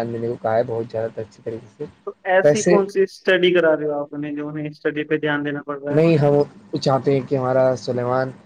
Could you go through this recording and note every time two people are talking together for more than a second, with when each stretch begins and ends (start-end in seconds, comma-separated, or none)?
none